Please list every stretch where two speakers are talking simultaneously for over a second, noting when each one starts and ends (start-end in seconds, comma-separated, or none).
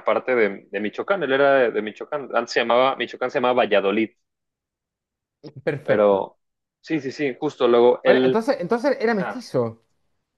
none